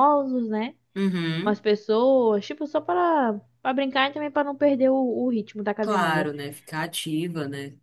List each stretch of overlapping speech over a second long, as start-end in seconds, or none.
none